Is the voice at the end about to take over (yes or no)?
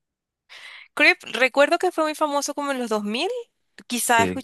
no